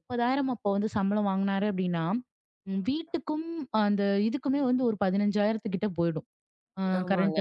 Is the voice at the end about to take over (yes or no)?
no